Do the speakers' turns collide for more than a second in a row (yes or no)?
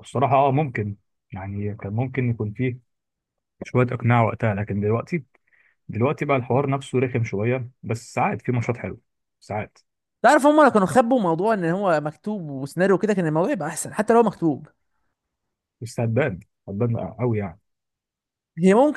no